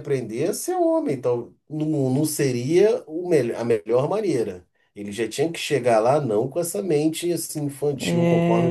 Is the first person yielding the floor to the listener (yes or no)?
yes